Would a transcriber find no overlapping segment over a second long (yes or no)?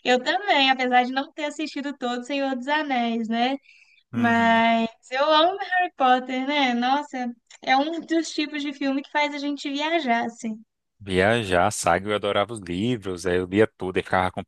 yes